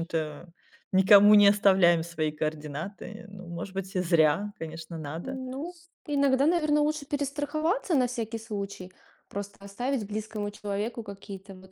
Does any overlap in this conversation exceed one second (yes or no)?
no